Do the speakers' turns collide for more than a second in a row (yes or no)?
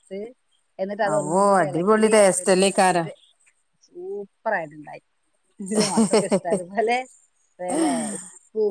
yes